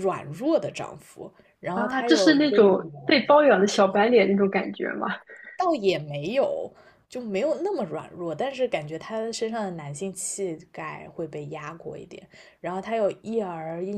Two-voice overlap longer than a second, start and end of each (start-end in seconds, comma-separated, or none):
1.7-3.2